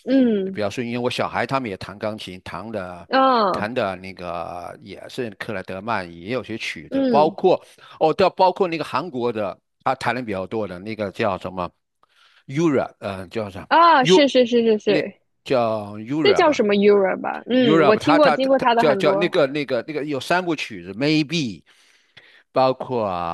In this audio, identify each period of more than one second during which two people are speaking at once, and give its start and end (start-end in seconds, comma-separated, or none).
17.6-19.4